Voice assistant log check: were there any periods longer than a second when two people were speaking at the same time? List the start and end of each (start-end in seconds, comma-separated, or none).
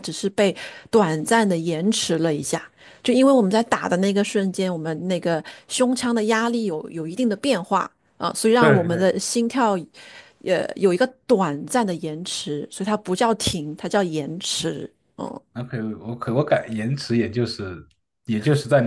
none